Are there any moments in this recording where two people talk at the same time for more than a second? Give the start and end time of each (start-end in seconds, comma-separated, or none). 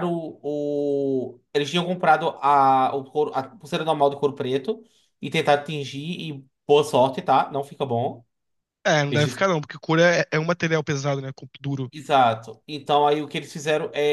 none